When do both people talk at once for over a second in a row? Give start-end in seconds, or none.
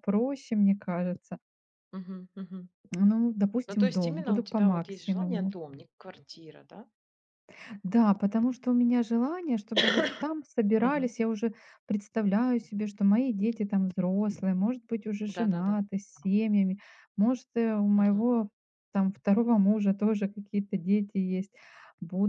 3.7-5.5